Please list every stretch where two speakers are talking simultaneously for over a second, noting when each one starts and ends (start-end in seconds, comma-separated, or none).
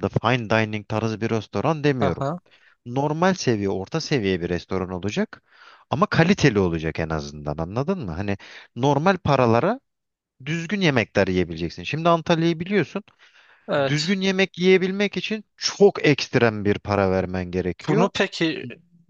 none